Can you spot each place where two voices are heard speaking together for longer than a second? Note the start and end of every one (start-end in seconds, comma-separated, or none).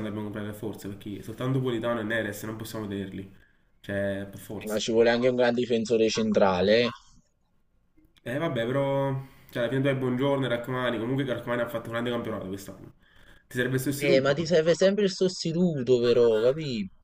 none